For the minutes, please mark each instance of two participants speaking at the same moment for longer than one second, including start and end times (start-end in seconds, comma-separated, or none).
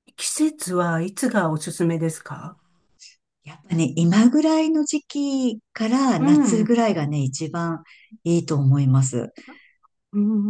none